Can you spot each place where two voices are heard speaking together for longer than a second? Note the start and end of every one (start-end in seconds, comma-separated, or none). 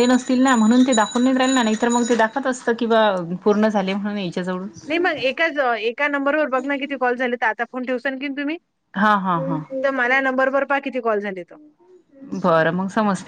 none